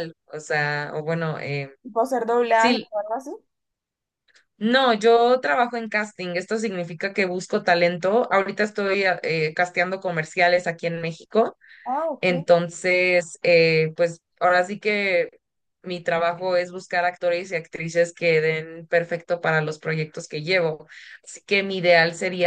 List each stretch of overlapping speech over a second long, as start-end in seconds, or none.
none